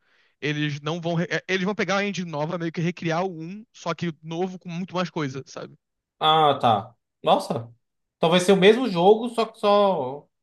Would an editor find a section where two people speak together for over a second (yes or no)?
no